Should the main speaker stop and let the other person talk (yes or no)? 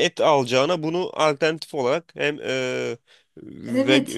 yes